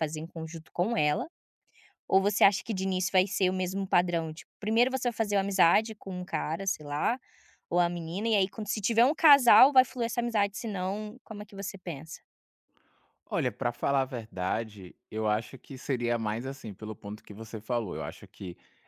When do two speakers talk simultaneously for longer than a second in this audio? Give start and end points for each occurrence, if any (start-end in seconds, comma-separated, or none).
none